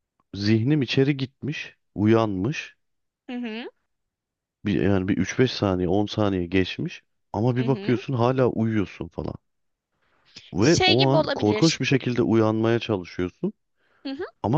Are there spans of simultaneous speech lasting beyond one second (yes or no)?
yes